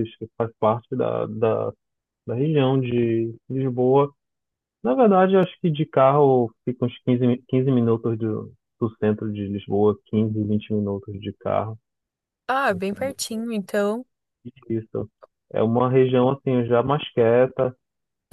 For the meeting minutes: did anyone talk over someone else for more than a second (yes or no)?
no